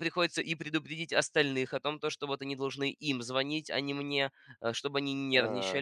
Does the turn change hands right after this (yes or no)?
no